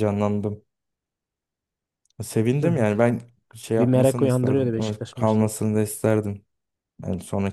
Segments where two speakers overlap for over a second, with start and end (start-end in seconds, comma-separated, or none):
3.8-5.5